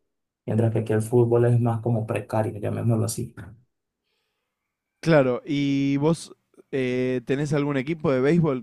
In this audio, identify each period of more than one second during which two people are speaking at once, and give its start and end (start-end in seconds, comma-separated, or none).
none